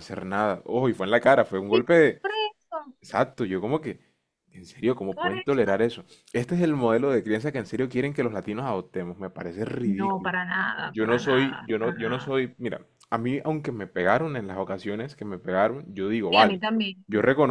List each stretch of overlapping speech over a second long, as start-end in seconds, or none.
10.9-12.4